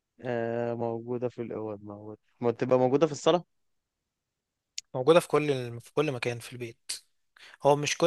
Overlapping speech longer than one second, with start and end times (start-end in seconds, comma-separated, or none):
none